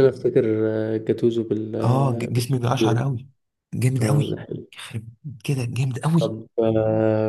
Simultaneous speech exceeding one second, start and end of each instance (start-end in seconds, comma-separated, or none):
1.8-3.1